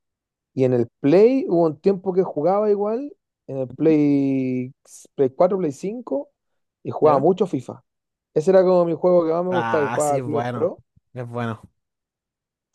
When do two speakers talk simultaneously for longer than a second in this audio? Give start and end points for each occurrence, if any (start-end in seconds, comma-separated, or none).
9.5-10.7